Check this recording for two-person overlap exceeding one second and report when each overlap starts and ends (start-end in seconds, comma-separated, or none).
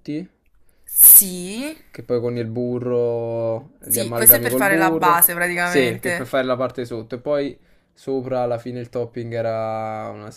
3.8-6.4